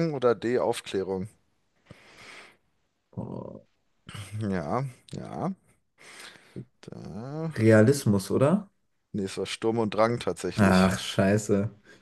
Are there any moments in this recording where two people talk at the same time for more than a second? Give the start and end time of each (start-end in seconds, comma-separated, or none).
none